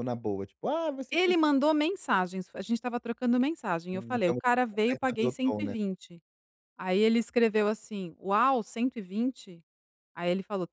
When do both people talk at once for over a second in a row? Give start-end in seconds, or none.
3.9-5.7